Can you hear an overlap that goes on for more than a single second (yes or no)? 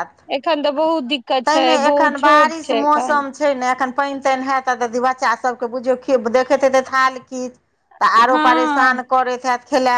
yes